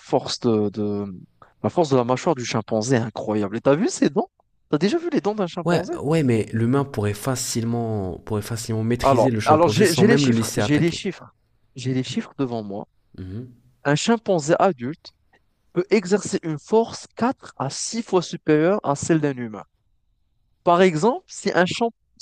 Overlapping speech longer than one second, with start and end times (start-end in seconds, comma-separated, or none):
9.0-11.0